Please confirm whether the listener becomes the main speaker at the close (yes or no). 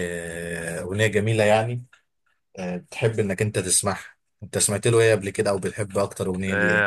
yes